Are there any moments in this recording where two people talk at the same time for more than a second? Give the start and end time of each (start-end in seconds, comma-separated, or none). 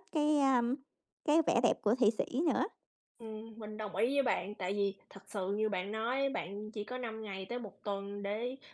none